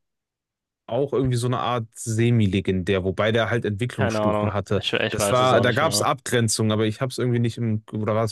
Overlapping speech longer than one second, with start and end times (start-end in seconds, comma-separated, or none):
4.0-6.1